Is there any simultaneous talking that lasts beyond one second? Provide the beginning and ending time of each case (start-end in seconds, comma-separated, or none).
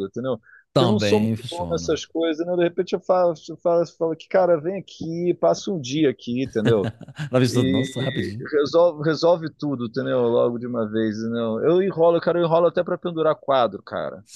0.7-2.0